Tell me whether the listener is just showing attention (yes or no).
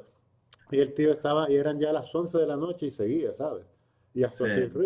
yes